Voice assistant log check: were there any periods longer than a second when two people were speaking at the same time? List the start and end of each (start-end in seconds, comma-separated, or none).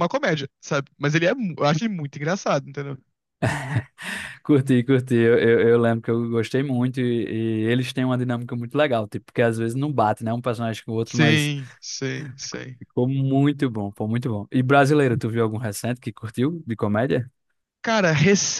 none